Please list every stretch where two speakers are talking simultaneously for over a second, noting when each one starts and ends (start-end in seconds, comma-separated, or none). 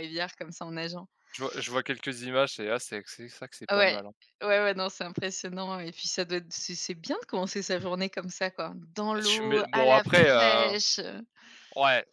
9.2-10.8